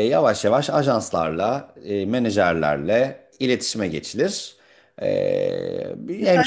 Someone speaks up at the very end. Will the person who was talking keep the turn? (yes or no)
no